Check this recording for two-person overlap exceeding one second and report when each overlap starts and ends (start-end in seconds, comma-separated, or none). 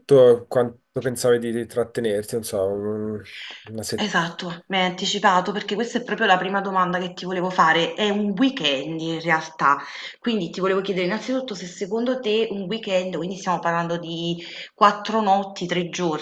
none